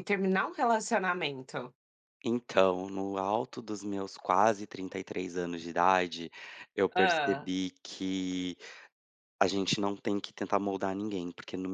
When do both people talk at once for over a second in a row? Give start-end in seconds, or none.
none